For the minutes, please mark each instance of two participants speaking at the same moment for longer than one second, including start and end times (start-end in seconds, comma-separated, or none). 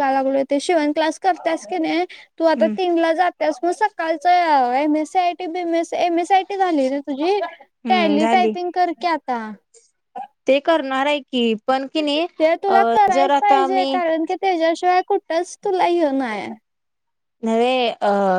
12.7-14.0